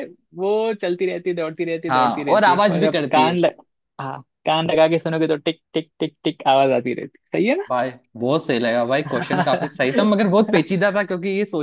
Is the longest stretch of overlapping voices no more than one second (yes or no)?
no